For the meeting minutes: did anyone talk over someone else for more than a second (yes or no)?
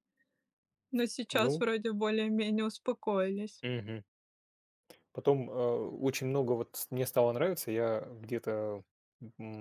no